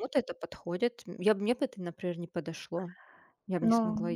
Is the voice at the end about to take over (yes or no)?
yes